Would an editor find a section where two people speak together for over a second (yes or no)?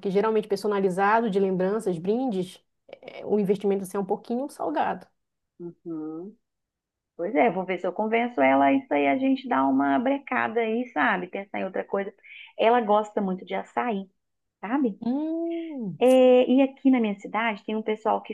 no